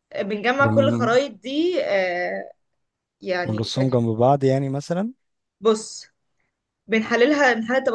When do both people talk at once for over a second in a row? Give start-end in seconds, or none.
none